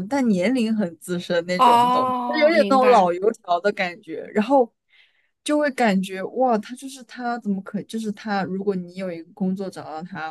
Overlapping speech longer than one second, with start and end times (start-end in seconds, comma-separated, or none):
1.6-3.1